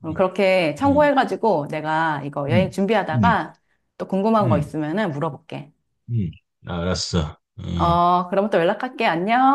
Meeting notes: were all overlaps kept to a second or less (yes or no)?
yes